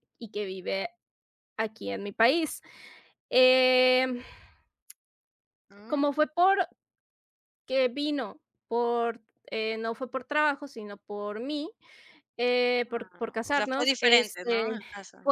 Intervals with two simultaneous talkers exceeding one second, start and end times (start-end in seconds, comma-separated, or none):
12.9-14.6